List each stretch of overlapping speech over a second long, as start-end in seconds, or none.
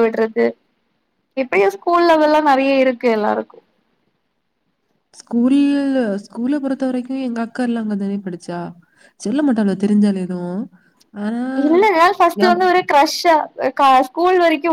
none